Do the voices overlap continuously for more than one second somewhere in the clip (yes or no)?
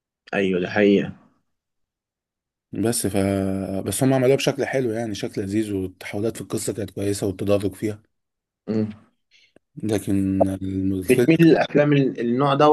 no